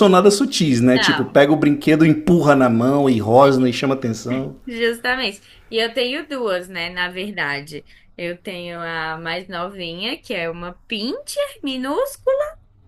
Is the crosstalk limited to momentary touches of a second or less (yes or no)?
yes